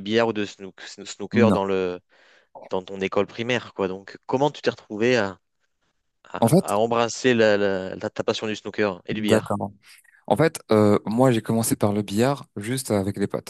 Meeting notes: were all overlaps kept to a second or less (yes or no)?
yes